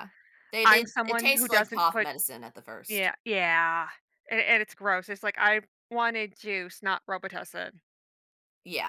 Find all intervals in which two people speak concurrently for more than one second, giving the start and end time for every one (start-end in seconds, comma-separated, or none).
0.6-2.1